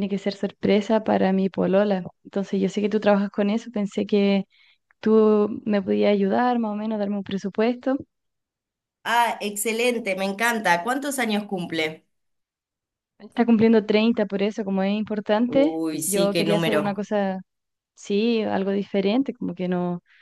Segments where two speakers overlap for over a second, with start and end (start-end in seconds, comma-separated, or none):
15.5-17.1